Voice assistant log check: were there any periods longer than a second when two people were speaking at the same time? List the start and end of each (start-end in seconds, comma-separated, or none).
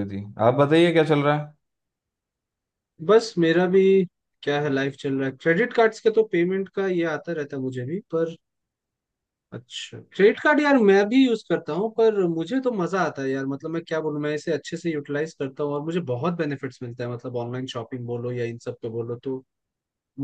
none